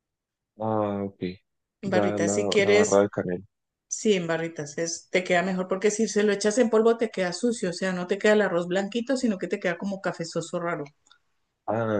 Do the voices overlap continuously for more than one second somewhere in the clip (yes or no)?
yes